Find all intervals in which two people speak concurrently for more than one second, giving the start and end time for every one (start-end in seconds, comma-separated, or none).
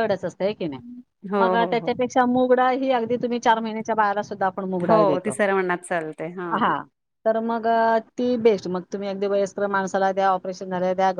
none